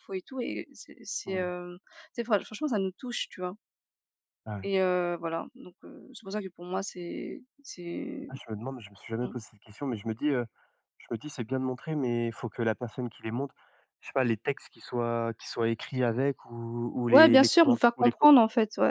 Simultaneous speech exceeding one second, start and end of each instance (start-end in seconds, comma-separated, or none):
17.1-18.3